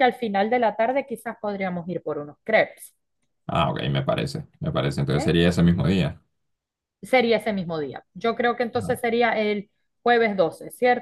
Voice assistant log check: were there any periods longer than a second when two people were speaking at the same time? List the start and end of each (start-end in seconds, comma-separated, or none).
none